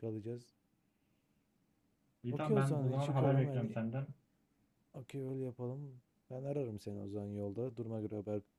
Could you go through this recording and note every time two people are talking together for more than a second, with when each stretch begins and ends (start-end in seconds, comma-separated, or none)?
2.3-3.8